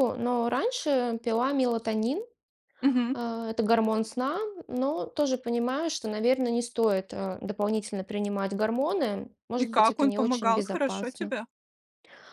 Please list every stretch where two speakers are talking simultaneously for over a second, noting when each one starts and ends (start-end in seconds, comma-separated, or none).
9.6-11.3